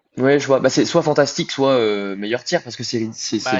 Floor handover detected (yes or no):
yes